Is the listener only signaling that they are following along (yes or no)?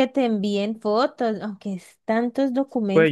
no